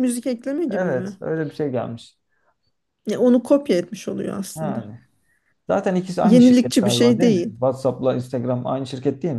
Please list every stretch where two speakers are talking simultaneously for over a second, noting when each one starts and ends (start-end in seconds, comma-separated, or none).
6.2-7.6